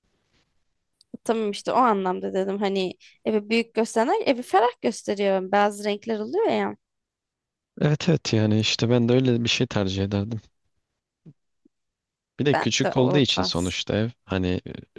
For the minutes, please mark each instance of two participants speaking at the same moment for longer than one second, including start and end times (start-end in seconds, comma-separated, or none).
12.5-13.8